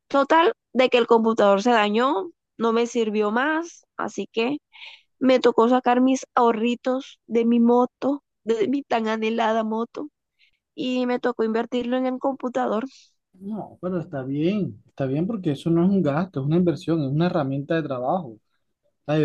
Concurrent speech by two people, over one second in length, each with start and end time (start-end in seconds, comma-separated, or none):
none